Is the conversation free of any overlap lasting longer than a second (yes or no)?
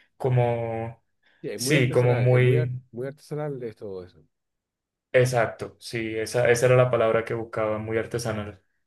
no